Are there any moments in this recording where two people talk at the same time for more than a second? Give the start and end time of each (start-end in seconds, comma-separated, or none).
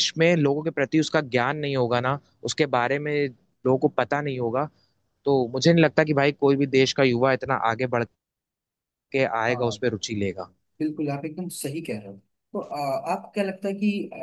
none